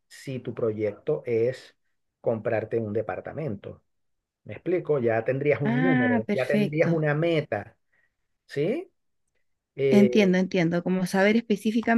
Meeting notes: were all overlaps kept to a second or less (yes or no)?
no